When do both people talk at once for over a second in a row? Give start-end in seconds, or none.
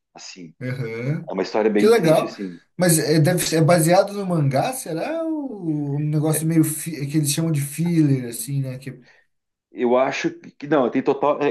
none